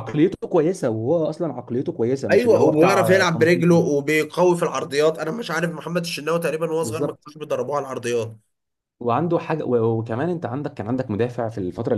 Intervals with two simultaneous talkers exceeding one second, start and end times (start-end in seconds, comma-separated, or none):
2.3-3.8